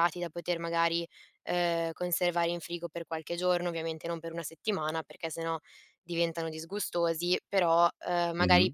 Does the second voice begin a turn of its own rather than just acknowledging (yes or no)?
no